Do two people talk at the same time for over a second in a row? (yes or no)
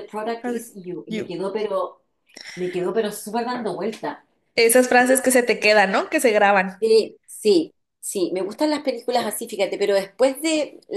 no